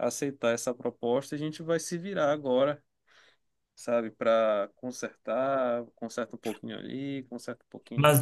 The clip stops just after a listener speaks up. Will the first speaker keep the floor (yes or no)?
no